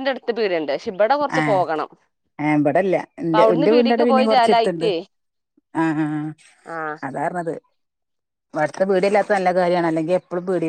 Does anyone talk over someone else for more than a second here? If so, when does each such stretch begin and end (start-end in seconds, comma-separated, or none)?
3.2-4.9